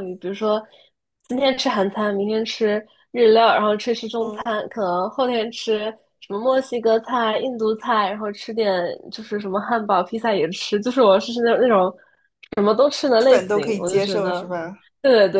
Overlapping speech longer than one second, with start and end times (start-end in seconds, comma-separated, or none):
13.2-14.4